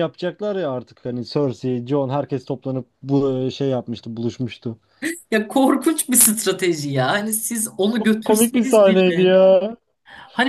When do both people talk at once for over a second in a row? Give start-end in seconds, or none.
8.0-9.3